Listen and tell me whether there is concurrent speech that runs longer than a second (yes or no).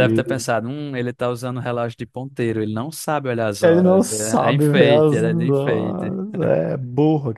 yes